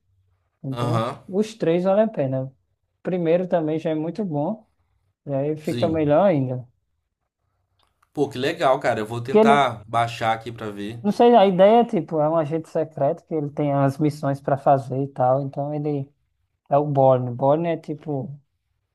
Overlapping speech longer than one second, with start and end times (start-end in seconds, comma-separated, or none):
none